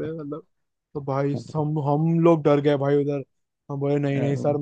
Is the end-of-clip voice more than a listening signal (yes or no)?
no